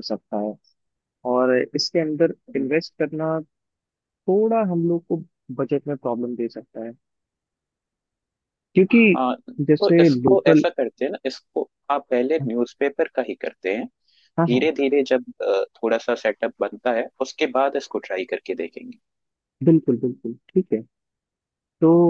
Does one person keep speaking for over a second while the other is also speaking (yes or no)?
yes